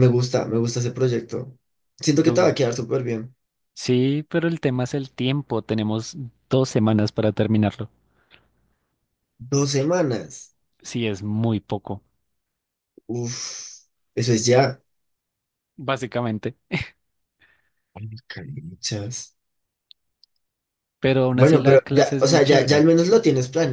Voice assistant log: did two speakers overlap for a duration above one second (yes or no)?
yes